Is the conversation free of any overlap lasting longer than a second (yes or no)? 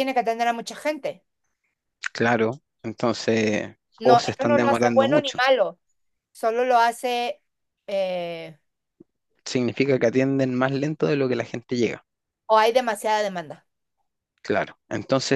no